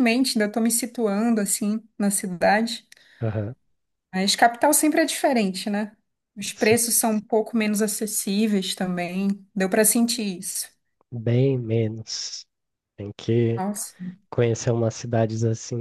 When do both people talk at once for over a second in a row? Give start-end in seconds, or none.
none